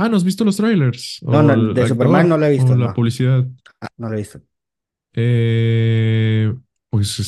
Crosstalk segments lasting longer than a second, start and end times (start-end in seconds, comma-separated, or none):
1.3-3.0